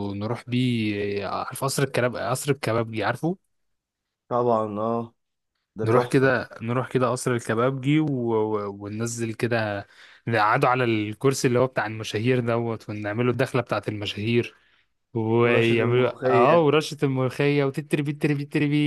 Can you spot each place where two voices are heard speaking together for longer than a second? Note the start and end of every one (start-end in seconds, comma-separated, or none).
15.5-16.7